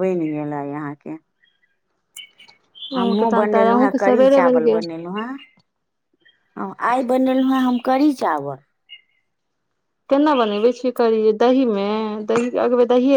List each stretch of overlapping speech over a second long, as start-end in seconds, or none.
3.0-4.8